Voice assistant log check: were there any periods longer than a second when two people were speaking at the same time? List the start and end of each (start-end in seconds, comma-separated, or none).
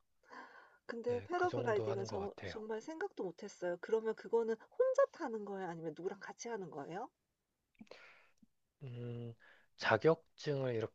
1.1-2.6